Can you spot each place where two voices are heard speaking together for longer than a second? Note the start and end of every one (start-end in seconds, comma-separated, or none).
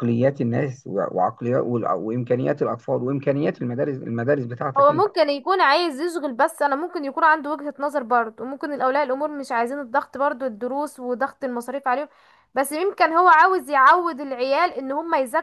none